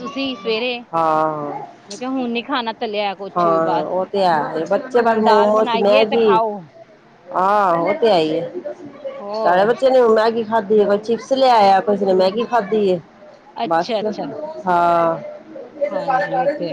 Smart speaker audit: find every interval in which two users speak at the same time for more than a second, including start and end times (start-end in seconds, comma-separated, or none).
5.1-6.4